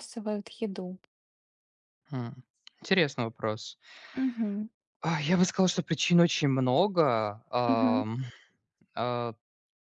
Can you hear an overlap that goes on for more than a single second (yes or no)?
no